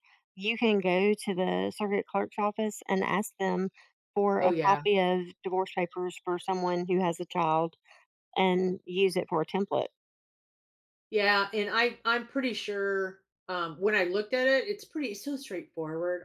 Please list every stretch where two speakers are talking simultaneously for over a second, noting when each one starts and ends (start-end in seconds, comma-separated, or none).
none